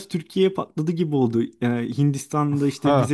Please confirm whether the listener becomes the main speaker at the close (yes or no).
no